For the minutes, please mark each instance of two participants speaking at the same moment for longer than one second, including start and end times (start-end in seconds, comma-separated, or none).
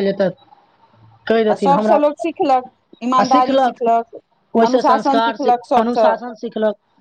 4.7-6.1